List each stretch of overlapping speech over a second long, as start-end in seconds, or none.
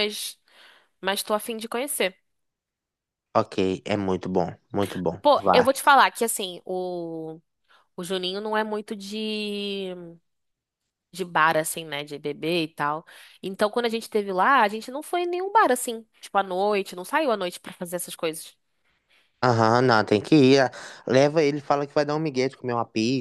none